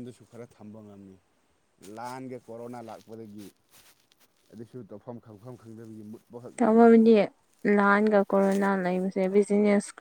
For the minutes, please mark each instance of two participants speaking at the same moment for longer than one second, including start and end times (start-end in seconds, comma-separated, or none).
none